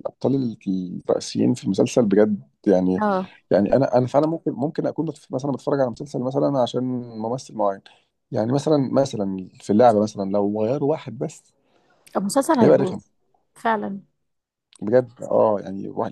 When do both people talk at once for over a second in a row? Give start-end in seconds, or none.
none